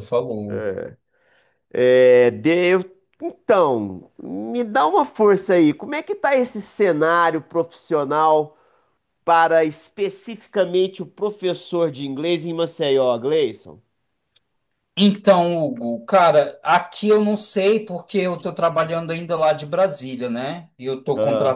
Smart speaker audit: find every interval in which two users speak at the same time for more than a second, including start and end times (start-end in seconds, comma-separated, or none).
none